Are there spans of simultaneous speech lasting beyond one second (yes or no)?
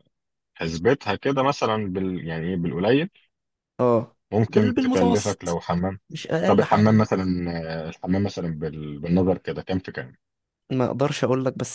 yes